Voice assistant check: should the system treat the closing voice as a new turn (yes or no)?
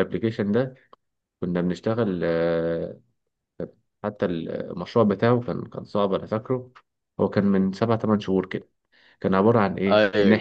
no